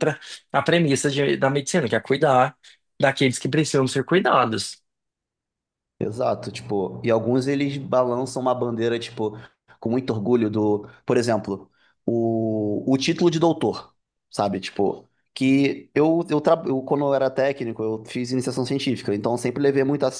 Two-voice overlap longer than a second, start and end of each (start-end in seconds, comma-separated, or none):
none